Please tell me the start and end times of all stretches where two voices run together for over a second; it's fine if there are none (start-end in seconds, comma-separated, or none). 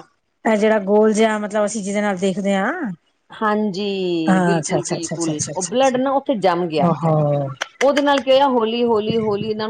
4.5-6.0